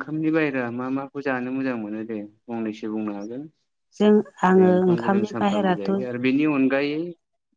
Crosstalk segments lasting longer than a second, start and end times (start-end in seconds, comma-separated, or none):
4.5-6.0